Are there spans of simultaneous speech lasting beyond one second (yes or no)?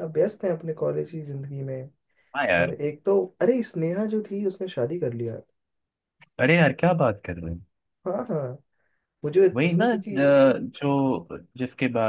no